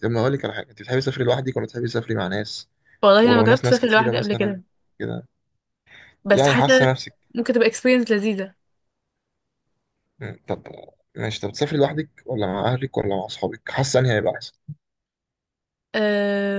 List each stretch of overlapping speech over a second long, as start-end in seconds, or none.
3.2-4.6